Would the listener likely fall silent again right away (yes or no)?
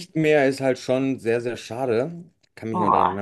yes